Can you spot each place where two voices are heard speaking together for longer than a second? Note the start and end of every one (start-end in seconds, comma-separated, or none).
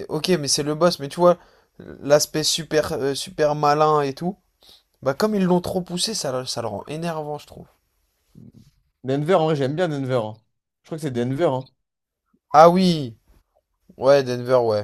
none